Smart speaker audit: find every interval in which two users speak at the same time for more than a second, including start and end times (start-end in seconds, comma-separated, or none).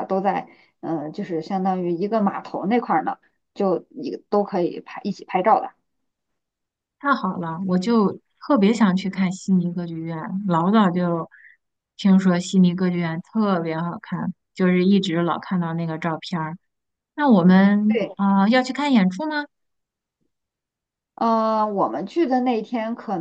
none